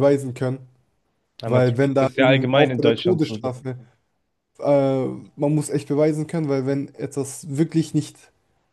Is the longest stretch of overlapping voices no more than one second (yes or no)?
no